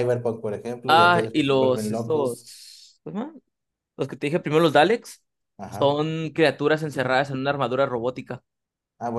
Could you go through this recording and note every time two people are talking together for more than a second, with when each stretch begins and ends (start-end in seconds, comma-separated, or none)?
0.9-2.5